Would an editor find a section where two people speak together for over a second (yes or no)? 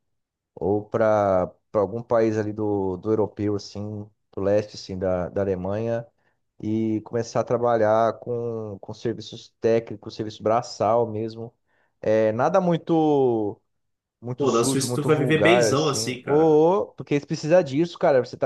yes